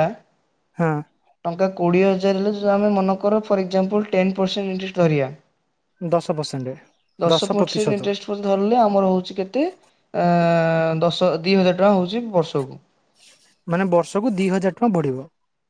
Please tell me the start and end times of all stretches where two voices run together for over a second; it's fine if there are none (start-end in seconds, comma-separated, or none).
none